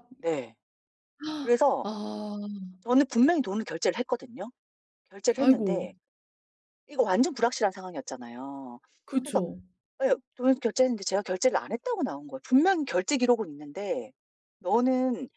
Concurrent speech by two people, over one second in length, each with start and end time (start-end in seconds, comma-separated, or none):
none